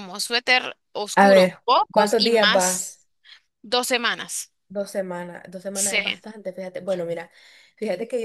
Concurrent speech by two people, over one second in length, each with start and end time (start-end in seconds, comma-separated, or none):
1.1-3.0